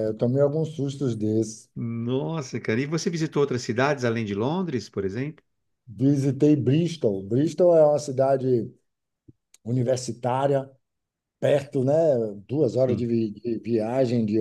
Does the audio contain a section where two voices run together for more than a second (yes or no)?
no